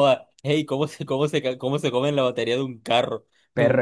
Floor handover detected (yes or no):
yes